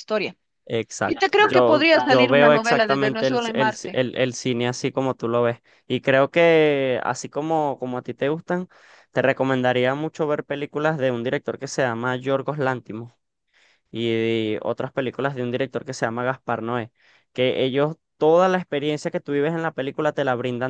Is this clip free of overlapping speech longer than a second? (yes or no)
no